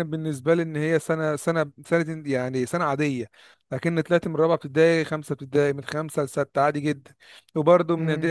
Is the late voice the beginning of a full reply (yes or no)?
no